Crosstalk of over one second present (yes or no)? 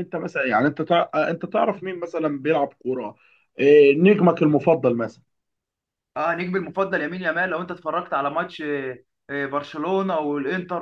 no